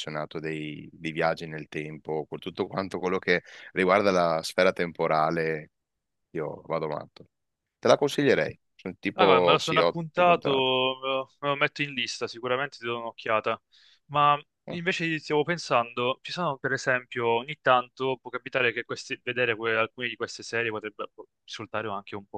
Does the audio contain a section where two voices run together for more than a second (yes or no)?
yes